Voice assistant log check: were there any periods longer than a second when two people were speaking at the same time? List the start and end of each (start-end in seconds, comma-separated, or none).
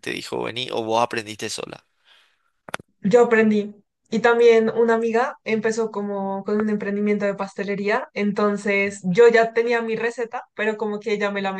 none